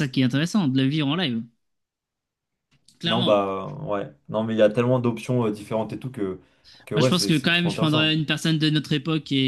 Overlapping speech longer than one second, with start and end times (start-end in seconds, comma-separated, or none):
7.0-8.2